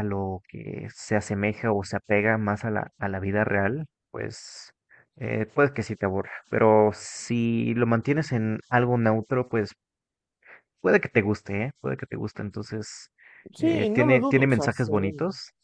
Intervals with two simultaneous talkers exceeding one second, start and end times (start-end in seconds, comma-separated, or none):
13.6-15.1